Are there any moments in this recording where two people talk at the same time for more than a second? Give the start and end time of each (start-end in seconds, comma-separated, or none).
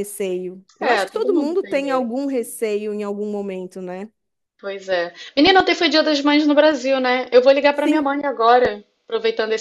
0.8-2.1